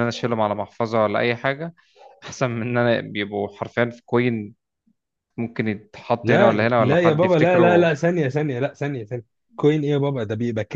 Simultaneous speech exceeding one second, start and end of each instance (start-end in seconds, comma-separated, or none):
6.2-7.9